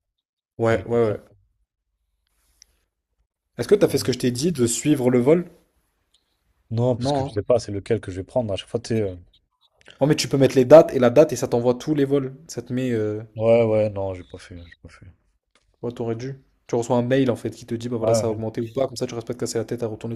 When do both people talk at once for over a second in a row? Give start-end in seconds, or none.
none